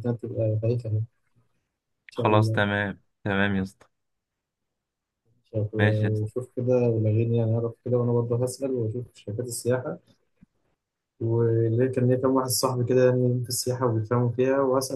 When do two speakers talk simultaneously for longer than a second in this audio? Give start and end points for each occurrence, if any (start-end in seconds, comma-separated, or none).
none